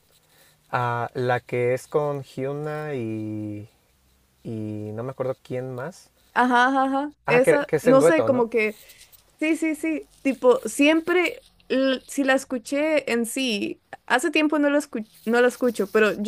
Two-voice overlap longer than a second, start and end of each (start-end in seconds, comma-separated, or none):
7.2-8.5